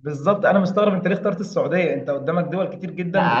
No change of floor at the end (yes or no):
no